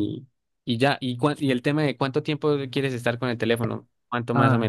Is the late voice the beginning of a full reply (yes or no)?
yes